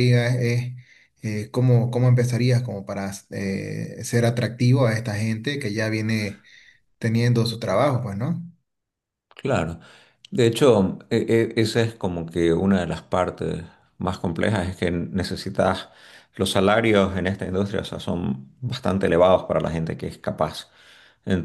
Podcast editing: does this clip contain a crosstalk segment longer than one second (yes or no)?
no